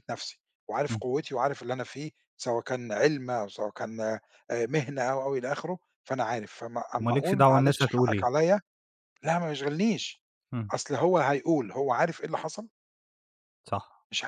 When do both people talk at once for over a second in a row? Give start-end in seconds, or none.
7.0-8.3